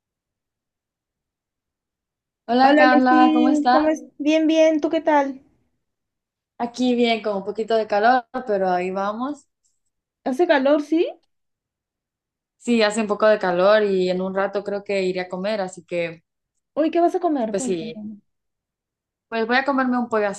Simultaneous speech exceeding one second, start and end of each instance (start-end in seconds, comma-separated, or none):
2.6-3.8